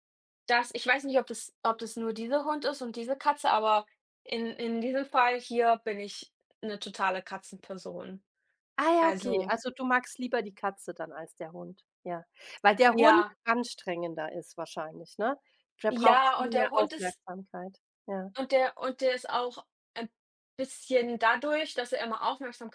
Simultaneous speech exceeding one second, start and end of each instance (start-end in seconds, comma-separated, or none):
15.9-17.2